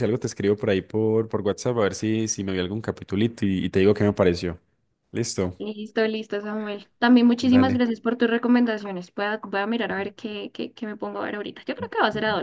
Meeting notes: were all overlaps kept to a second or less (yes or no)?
yes